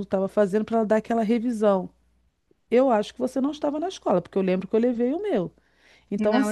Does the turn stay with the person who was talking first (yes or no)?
yes